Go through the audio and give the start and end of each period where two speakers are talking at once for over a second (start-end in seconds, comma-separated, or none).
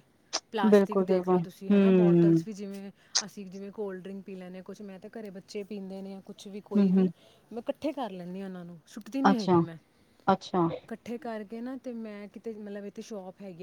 0.7-2.5